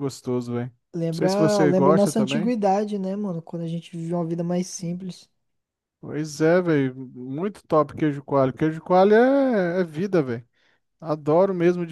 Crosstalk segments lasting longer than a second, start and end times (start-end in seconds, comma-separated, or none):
1.1-2.6